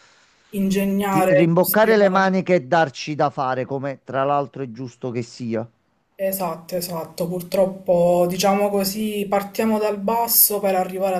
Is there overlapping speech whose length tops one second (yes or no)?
yes